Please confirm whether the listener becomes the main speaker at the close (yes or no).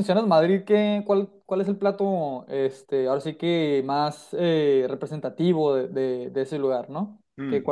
yes